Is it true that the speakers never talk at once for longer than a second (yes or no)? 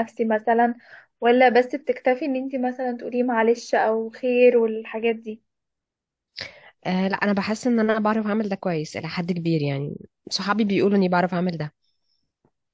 yes